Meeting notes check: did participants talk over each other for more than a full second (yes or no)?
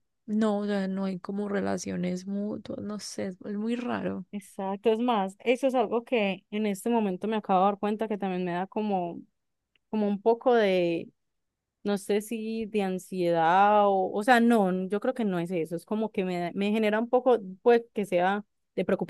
no